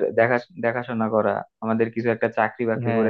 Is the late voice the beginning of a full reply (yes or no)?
no